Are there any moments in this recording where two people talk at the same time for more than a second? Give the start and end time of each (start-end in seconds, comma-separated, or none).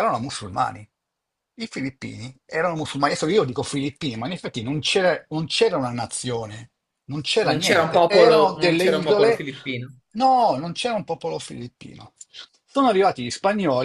7.5-9.4